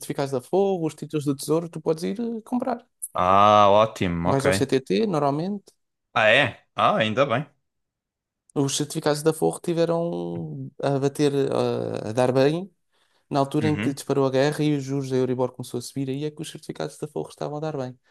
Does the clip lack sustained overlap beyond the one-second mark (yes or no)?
yes